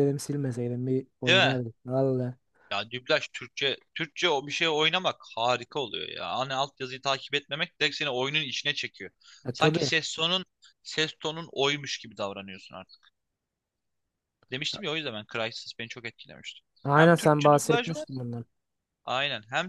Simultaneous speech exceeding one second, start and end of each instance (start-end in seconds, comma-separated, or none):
16.8-18.1